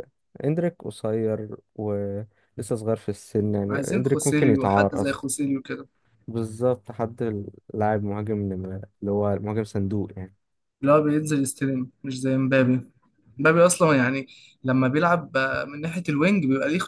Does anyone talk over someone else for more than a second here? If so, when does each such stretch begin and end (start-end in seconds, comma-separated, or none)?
3.7-5.3